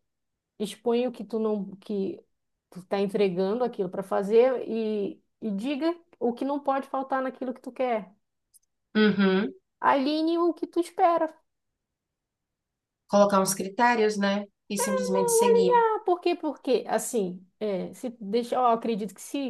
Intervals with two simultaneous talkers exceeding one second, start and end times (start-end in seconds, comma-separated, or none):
none